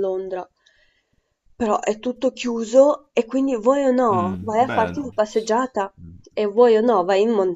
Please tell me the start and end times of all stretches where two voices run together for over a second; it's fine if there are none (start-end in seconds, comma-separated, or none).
4.1-5.6